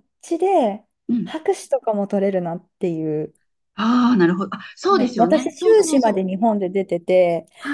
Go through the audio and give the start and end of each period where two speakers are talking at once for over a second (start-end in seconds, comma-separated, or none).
4.9-6.3